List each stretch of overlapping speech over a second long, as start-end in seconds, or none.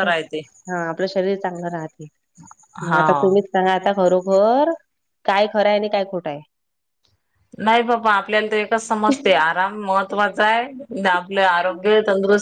none